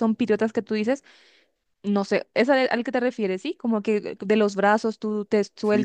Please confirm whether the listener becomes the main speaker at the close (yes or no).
yes